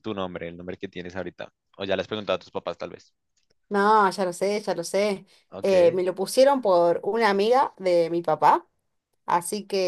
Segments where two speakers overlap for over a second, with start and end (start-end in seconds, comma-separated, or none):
none